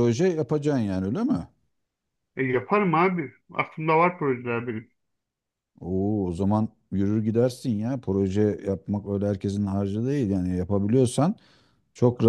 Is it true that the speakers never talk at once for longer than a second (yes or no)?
yes